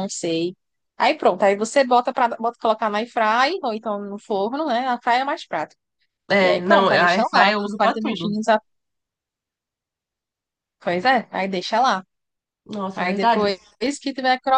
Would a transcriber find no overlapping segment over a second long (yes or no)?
no